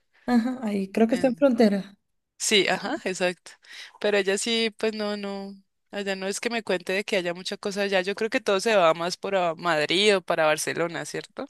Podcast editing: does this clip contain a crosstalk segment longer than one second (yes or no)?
no